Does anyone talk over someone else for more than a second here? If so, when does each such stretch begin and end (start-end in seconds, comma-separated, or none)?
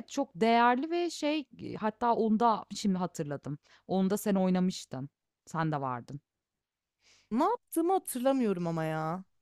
none